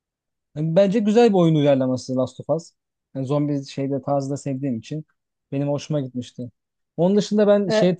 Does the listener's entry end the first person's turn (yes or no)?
no